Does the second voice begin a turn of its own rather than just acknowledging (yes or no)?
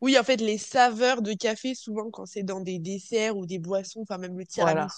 no